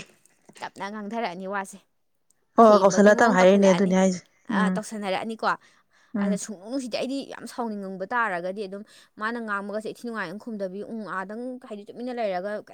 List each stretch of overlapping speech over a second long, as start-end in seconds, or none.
2.6-3.9